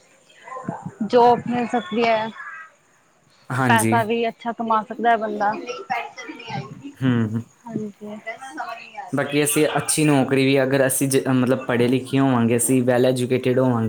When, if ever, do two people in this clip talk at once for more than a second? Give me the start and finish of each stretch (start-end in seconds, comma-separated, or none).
none